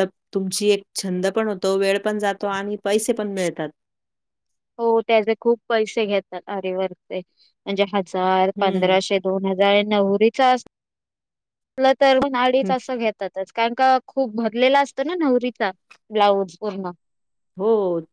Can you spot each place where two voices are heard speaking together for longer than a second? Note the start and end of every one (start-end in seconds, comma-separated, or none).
none